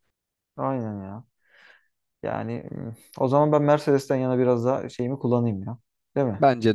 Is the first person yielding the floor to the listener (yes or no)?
yes